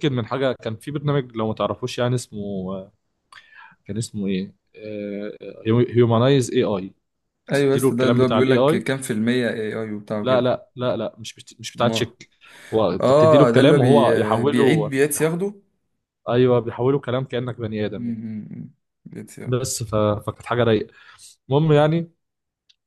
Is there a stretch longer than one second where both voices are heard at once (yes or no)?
yes